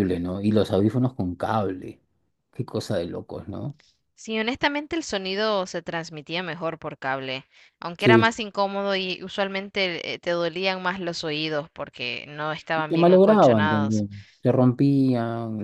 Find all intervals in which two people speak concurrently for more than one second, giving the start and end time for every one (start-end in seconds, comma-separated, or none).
12.8-14.1